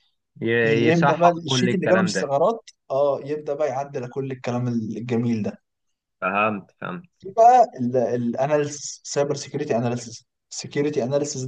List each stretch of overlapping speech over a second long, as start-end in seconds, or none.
0.6-2.3